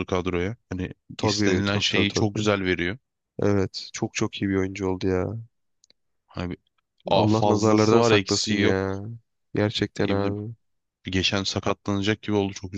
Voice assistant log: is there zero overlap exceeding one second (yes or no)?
no